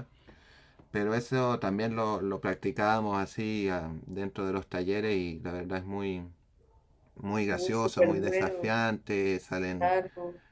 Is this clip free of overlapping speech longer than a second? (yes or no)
no